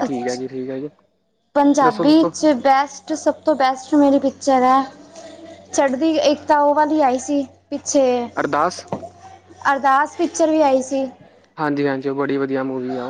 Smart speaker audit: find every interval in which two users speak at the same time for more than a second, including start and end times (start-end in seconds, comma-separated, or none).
none